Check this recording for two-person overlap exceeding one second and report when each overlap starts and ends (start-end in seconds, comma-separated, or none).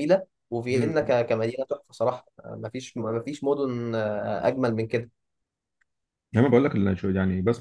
none